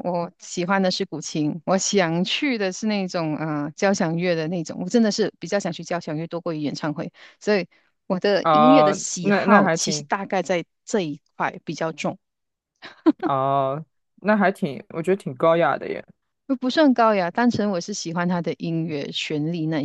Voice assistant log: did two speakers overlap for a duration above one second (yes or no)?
yes